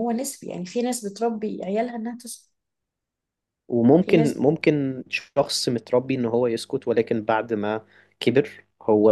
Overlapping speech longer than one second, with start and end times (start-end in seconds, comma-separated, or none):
none